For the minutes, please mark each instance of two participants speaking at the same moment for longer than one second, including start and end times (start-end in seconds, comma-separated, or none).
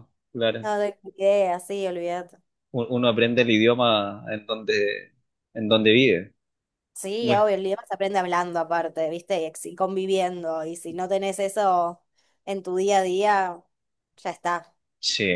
none